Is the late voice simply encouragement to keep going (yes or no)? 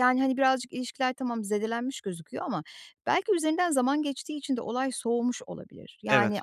yes